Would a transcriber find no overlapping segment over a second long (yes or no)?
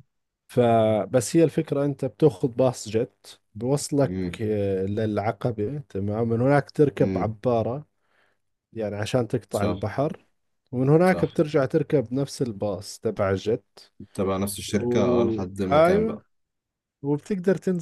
no